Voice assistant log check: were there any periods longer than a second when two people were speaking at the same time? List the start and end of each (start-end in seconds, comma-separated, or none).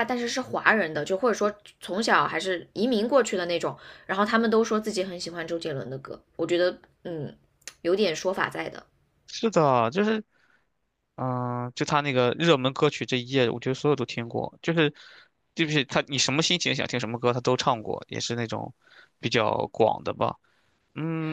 none